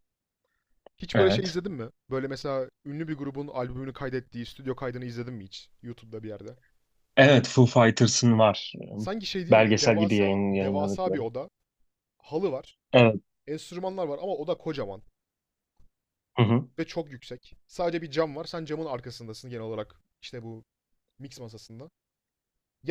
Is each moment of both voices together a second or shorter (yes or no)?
no